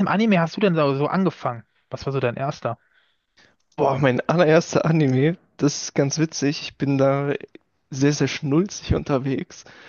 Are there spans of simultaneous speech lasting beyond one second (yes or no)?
no